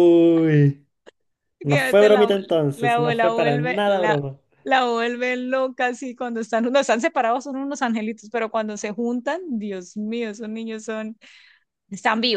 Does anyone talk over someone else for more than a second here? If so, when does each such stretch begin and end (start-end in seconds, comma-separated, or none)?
1.7-4.2